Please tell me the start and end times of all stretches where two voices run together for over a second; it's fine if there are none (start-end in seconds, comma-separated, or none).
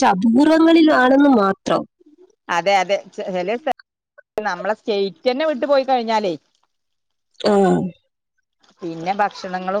none